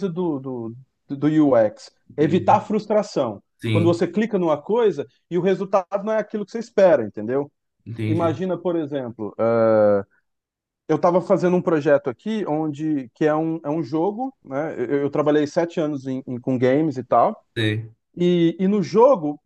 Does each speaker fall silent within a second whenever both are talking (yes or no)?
yes